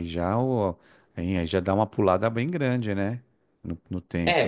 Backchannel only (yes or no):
no